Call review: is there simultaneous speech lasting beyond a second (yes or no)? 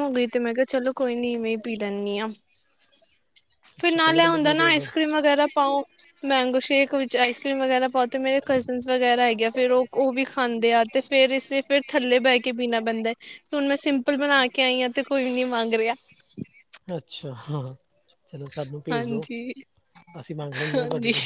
yes